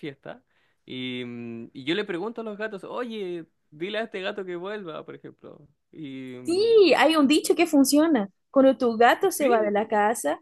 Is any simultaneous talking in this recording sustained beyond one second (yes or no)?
no